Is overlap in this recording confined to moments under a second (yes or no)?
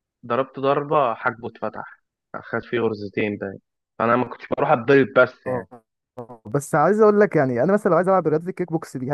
yes